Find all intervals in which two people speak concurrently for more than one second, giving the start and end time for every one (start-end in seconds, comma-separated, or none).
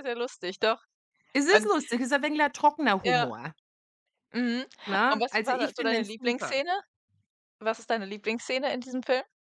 5.1-6.6